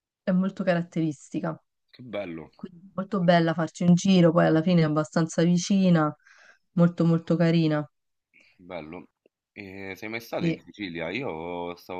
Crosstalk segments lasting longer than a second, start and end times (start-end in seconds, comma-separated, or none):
none